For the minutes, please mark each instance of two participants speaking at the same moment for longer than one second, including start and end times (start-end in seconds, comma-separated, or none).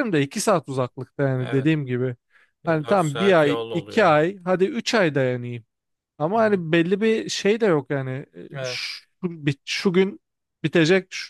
2.7-4.1